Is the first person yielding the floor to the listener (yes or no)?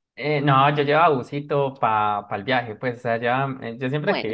no